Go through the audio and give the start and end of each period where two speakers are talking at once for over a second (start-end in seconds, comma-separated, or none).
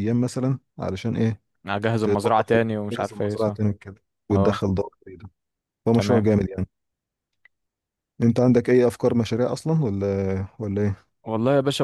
2.0-3.6